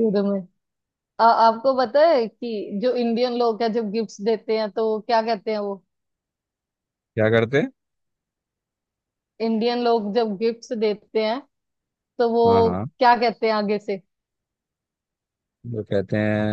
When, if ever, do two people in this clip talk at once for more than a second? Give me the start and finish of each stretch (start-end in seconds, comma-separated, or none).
none